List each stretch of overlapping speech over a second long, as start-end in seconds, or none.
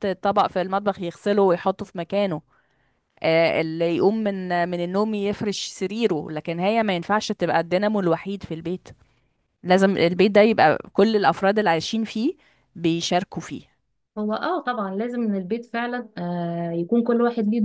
none